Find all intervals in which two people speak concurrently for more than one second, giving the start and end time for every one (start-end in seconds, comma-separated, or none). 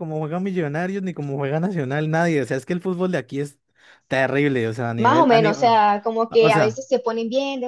5.0-6.8